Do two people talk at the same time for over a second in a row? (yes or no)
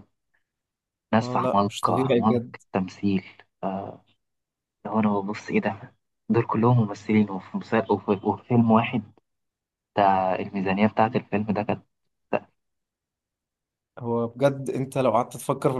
yes